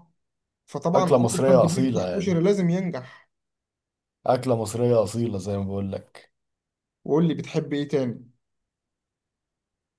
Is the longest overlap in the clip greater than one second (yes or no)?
yes